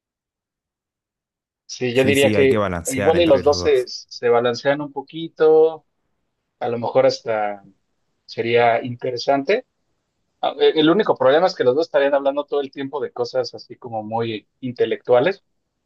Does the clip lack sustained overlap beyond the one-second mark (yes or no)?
no